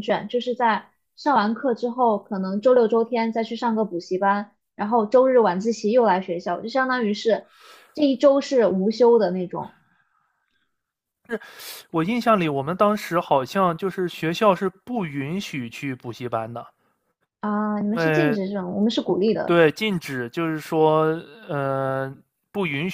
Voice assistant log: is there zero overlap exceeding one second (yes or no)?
yes